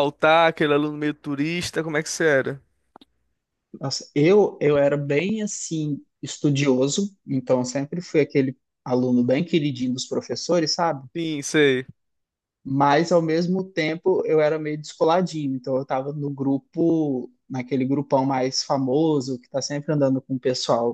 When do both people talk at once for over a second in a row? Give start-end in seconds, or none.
none